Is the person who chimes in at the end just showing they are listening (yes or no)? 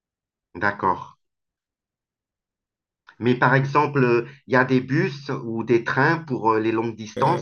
no